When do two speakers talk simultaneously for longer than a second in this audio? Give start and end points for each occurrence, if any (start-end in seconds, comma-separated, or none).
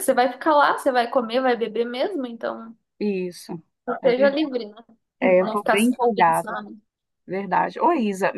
5.2-6.6